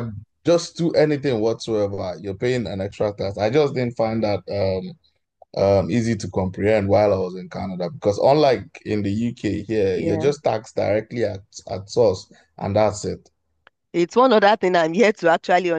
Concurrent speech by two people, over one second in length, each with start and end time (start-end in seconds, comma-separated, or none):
none